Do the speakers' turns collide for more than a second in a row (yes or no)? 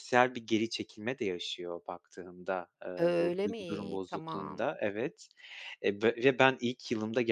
yes